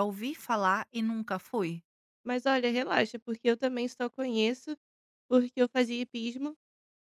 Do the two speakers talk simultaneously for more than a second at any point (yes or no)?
no